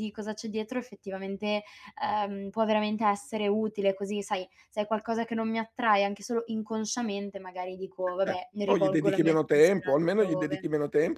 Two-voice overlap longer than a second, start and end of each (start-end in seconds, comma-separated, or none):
8.7-10.7